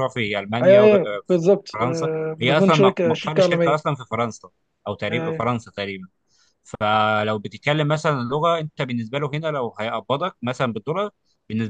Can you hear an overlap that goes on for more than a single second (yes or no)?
yes